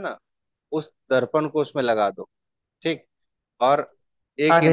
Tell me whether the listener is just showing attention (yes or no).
no